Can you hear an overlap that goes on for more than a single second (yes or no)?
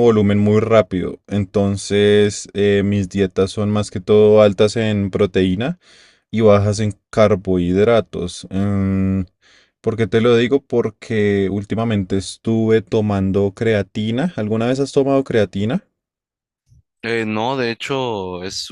no